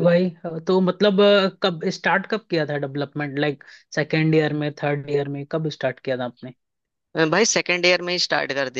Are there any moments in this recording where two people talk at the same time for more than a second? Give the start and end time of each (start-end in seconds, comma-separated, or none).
none